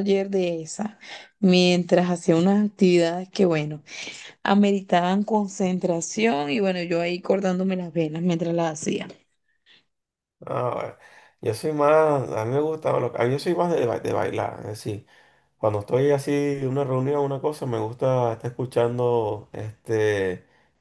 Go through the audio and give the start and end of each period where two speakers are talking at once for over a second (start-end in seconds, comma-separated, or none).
none